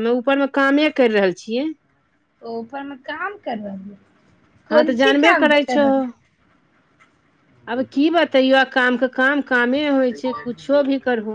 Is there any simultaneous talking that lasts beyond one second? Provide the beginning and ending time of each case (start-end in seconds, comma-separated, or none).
none